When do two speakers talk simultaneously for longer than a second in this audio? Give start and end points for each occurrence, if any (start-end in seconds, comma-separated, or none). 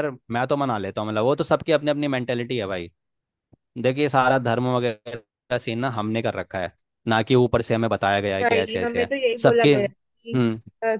8.4-10.4